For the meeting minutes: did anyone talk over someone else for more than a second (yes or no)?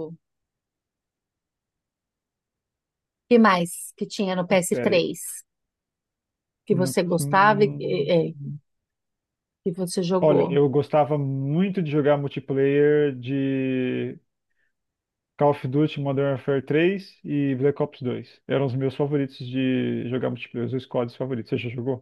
yes